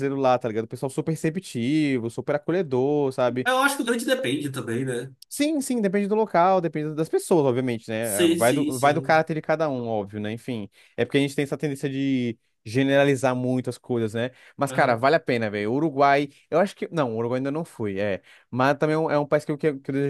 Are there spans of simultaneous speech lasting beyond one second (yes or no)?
yes